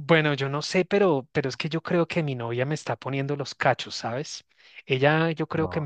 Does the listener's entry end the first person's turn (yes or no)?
no